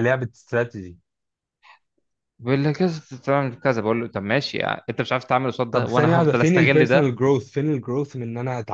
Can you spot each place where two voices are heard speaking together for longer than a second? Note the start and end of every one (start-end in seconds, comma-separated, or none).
5.7-7.1